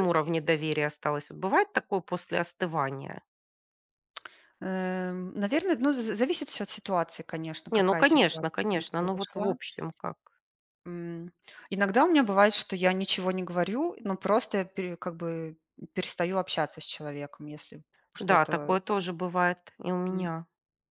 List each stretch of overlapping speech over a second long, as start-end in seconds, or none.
7.7-9.5